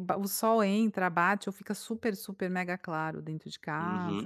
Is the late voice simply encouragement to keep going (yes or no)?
no